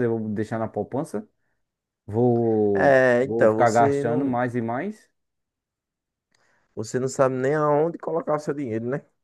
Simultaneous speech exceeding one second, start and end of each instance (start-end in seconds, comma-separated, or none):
2.7-4.4